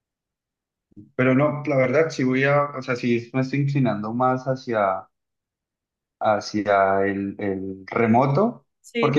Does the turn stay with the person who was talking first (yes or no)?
yes